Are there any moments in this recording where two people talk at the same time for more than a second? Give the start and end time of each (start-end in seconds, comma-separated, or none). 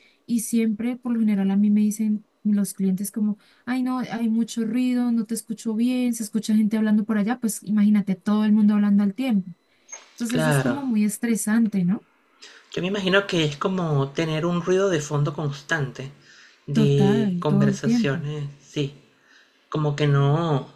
16.7-18.2